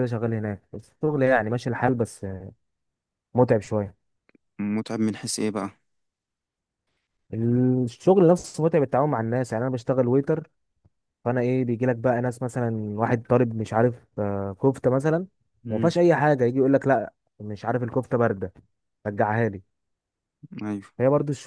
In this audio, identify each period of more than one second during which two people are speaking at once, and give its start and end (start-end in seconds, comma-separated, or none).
none